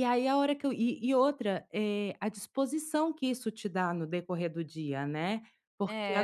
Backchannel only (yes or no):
yes